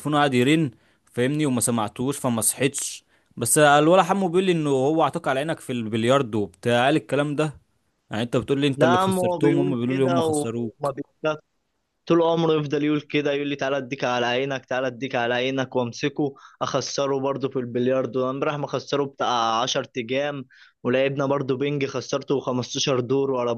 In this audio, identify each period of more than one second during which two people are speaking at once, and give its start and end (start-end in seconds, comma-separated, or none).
8.8-10.9